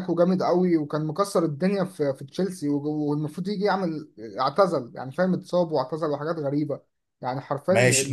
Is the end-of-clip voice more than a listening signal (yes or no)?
yes